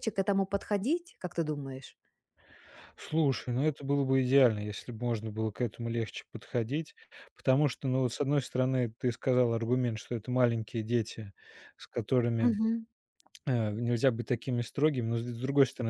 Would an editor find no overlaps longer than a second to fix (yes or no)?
yes